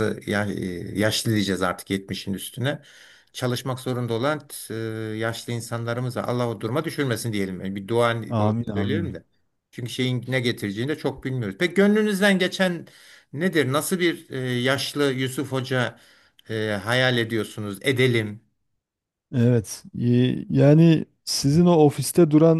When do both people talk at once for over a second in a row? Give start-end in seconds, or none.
none